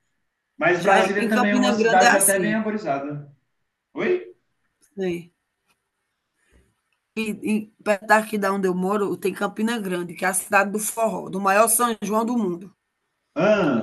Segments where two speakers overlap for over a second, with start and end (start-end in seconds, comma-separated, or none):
0.8-2.6